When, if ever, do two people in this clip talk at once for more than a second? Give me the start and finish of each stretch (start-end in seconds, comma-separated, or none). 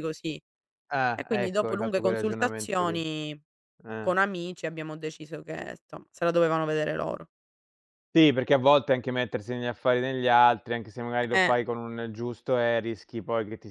1.1-3.0